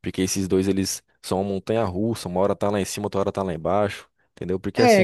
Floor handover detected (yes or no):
yes